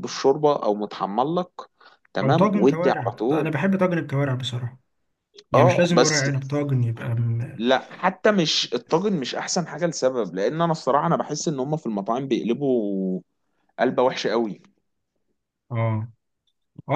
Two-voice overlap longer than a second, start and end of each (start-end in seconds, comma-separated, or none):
2.2-3.5